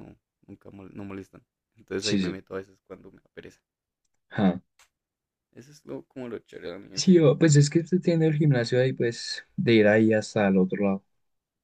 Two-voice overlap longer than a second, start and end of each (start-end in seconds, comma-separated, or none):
none